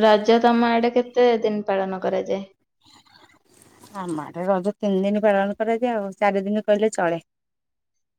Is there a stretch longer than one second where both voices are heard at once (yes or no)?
no